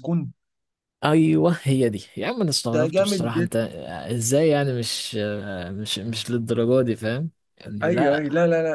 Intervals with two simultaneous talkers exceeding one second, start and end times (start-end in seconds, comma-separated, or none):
none